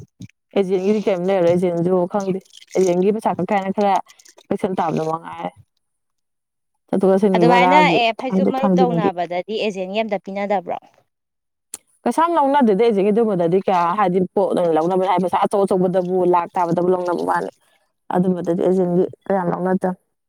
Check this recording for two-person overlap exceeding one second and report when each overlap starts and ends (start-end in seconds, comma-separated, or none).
7.3-9.1